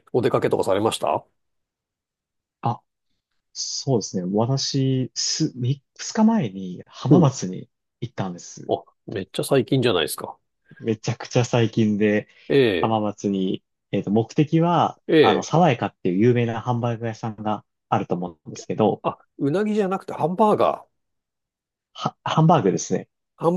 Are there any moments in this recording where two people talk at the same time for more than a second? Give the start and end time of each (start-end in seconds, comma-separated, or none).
none